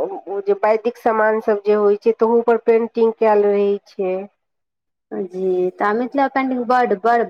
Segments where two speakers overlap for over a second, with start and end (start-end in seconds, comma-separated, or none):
none